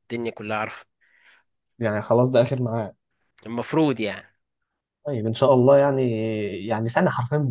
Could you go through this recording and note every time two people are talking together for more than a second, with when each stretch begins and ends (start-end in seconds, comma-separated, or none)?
none